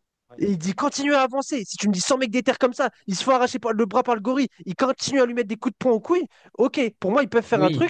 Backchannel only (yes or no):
yes